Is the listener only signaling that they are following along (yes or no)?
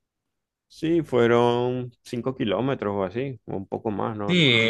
no